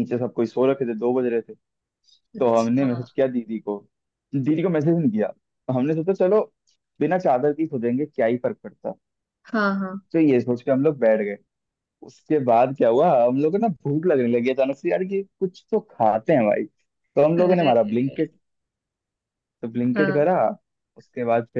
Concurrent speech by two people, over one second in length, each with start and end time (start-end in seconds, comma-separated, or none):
none